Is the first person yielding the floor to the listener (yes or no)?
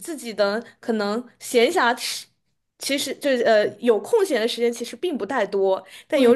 no